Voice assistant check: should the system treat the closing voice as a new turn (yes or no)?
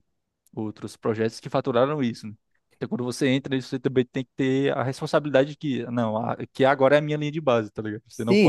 yes